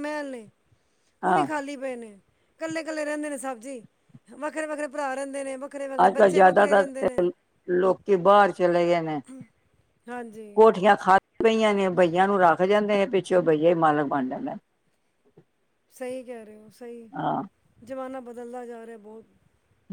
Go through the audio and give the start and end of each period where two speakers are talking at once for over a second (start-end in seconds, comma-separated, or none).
6.0-7.2